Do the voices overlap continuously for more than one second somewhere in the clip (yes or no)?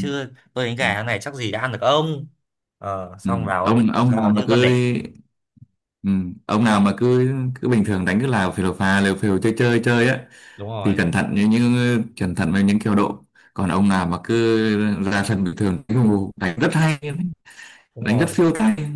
yes